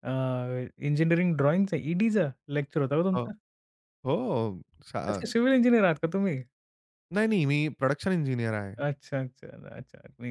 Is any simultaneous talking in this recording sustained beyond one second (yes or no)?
no